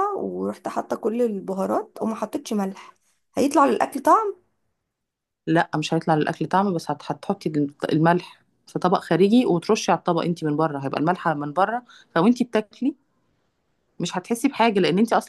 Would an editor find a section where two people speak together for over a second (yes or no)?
no